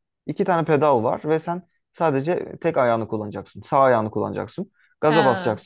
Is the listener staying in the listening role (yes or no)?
yes